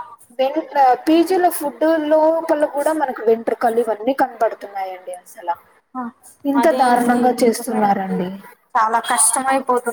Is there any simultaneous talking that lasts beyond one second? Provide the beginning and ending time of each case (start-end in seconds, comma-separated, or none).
6.6-8.2